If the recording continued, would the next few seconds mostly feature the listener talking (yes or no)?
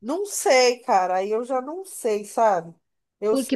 yes